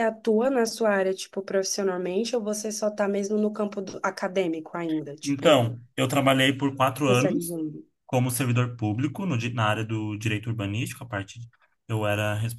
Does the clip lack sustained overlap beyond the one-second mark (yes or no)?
yes